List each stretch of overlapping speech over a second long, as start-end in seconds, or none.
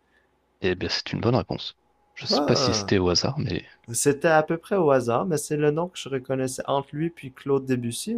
none